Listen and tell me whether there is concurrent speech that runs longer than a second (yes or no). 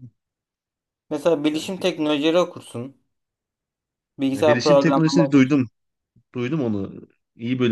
yes